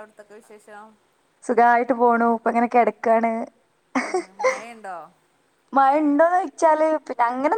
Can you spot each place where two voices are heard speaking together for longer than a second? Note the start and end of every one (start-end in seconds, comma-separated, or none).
none